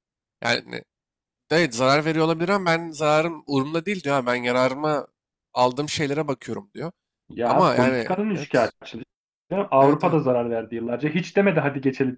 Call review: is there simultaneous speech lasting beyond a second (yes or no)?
yes